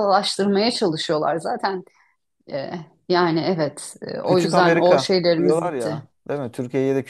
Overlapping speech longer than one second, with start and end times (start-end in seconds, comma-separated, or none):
4.2-6.0